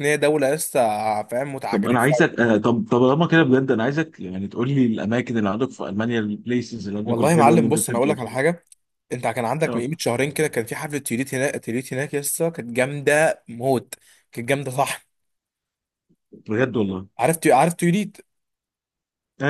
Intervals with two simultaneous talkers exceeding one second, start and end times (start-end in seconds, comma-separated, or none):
7.0-8.4